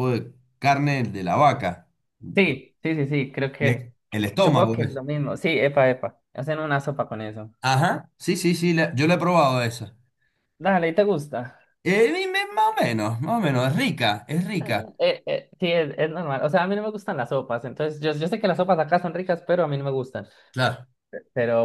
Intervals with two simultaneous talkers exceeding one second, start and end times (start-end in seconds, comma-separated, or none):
3.6-5.0